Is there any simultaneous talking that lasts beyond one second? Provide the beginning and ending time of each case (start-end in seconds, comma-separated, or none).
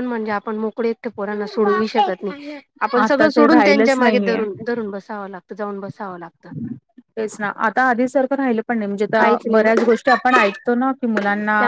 3.0-4.4